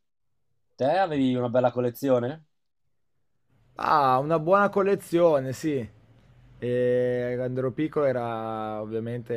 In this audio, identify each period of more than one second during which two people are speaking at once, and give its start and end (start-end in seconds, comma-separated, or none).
none